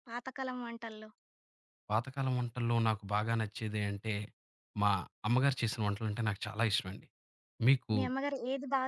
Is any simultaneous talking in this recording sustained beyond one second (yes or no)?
no